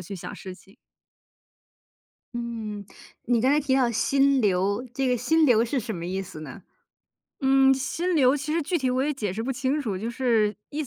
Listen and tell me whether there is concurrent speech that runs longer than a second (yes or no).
no